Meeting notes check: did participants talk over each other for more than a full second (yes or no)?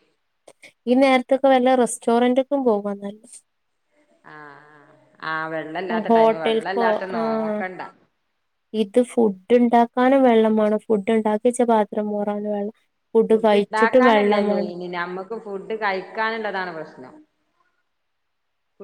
yes